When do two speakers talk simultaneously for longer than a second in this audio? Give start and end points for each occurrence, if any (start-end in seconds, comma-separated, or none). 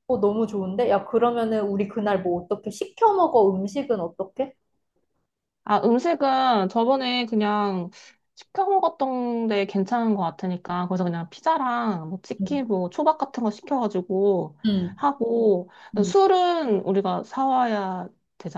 none